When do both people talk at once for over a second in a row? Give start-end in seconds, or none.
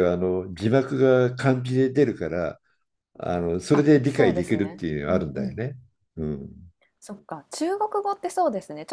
3.7-5.6